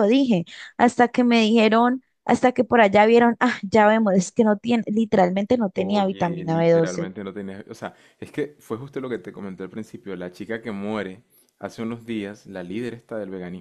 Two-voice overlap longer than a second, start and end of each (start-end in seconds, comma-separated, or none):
5.7-7.1